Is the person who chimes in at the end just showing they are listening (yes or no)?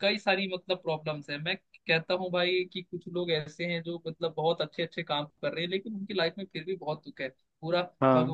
yes